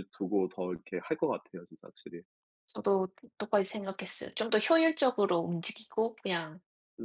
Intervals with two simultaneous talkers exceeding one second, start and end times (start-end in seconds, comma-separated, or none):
none